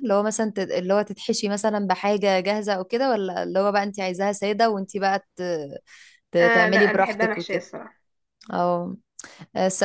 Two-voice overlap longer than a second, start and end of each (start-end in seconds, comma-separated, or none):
6.4-7.7